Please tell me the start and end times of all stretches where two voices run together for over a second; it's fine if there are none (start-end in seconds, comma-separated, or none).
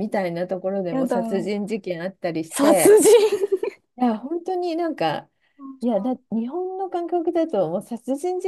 none